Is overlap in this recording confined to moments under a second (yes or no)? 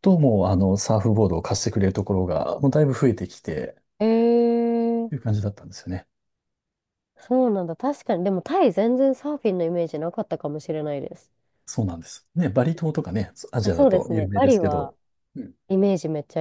no